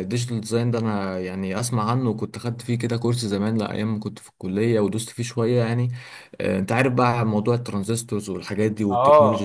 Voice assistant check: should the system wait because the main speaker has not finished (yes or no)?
no